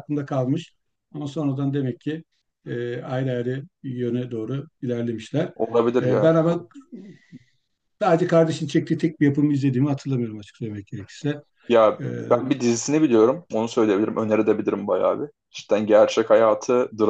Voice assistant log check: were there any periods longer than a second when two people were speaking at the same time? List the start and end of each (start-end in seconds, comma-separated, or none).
none